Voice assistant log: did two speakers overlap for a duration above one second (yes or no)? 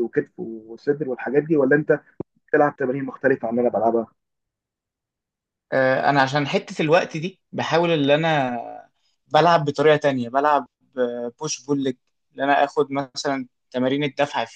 no